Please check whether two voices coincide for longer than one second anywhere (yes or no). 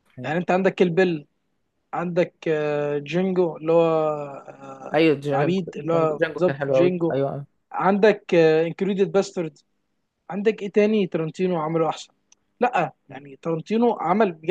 yes